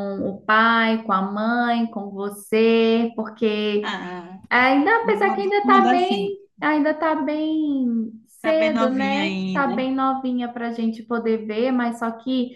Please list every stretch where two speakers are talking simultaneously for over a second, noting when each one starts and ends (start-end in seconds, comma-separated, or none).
5.0-6.4, 8.4-9.8